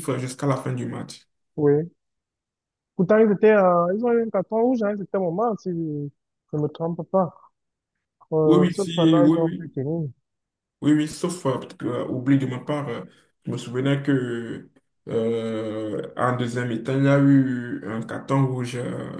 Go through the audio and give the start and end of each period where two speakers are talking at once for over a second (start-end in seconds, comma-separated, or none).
8.4-9.8